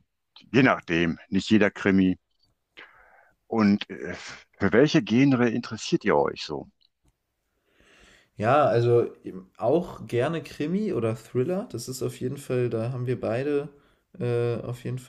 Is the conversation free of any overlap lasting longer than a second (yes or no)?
yes